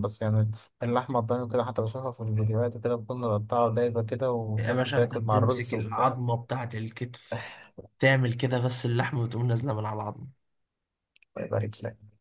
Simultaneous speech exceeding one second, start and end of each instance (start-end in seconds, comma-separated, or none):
4.6-6.2